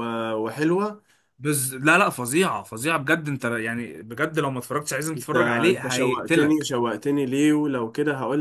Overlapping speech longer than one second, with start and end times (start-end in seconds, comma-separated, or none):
5.2-6.7